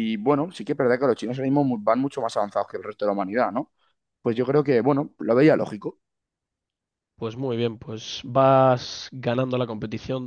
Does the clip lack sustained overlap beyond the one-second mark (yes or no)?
yes